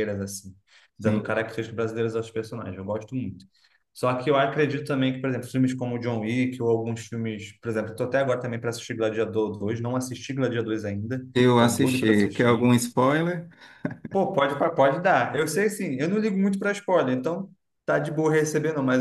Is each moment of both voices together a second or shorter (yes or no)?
no